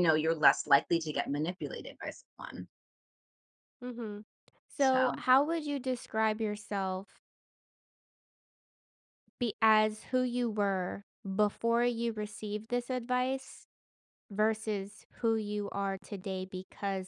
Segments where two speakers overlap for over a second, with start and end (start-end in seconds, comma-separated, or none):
none